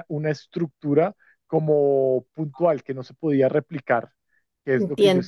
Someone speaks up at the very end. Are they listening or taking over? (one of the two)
listening